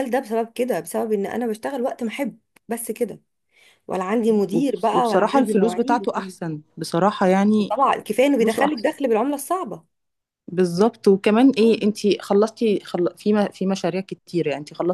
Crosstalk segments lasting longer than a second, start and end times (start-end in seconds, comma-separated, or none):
4.5-6.3